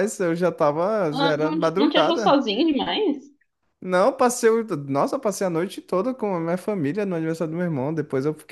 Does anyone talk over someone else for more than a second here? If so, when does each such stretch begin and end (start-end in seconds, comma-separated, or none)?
1.1-2.4